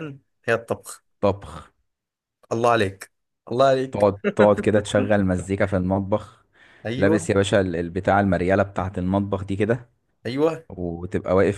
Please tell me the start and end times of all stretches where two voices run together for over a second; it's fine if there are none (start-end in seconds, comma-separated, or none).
none